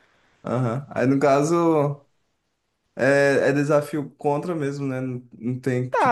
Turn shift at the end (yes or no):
yes